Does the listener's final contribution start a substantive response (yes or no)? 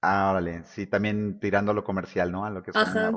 yes